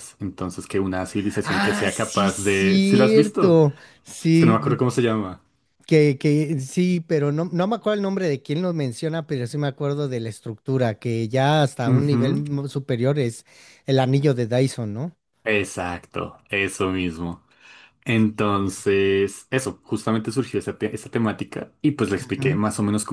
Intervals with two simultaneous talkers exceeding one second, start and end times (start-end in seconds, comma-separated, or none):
1.4-3.6